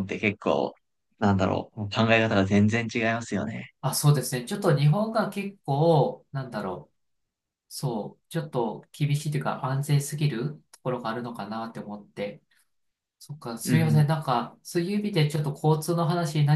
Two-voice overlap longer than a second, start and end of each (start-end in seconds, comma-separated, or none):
none